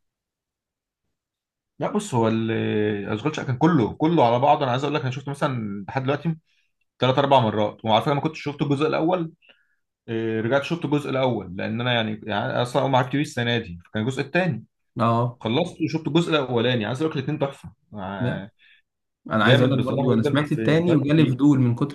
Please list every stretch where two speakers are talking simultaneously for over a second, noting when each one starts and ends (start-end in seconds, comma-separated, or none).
19.4-21.4